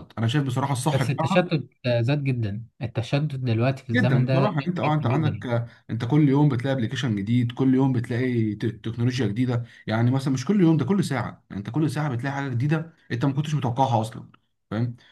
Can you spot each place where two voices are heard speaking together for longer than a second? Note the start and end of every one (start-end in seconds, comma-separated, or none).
3.9-5.5